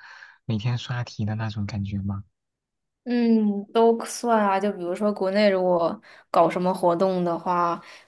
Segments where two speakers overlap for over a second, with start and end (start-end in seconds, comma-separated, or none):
none